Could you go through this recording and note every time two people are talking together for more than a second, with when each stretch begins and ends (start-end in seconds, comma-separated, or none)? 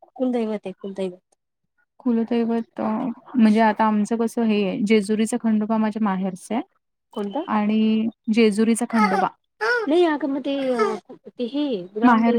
none